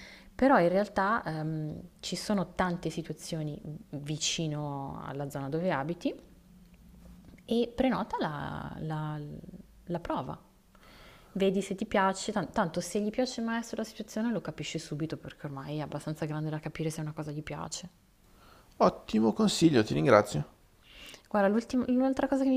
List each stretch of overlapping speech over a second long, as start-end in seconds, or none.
none